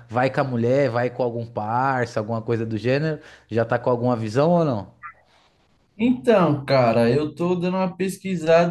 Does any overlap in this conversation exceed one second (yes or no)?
no